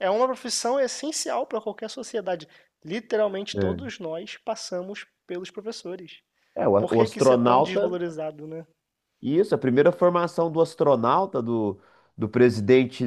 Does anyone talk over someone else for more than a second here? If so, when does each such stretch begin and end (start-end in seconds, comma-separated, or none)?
6.8-8.0